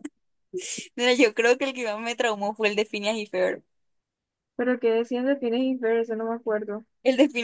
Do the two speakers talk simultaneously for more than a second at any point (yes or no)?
no